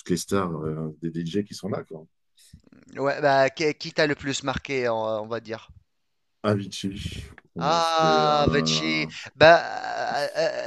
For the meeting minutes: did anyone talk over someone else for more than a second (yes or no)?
yes